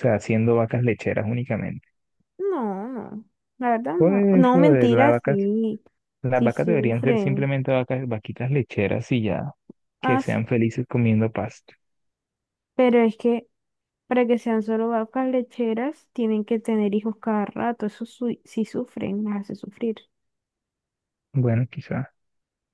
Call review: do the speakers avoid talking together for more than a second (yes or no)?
no